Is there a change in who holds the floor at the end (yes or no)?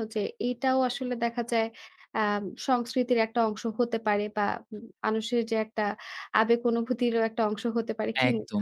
yes